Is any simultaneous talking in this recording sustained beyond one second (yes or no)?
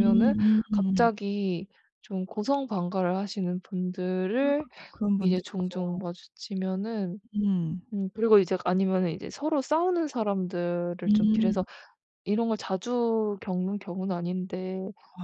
no